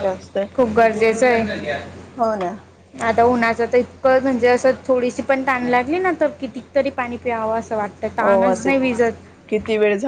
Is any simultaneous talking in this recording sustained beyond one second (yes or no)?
no